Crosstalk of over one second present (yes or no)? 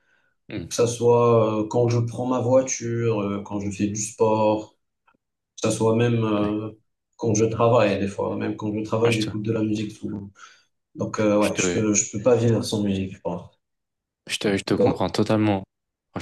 no